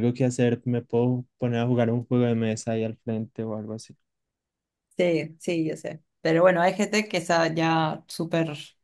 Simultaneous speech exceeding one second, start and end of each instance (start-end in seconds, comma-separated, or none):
none